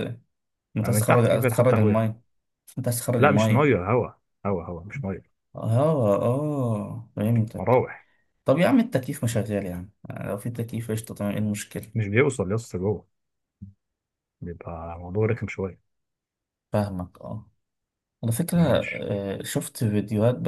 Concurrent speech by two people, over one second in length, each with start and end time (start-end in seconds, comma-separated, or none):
0.8-2.0